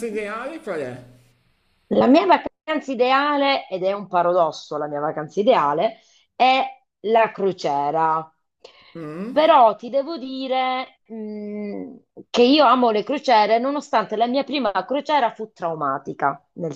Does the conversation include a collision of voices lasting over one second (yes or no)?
no